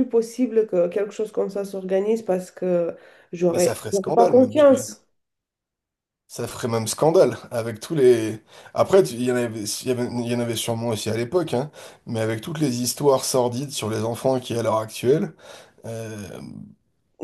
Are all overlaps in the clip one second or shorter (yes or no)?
no